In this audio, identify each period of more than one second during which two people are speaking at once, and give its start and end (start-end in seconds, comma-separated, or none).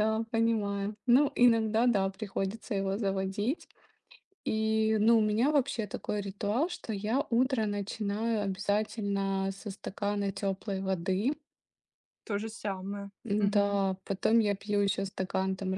none